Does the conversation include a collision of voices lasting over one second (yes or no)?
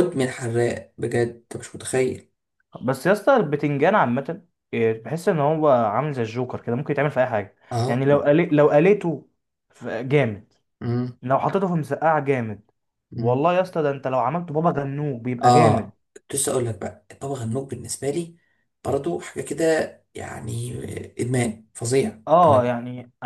no